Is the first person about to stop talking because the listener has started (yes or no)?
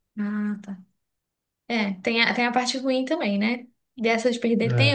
no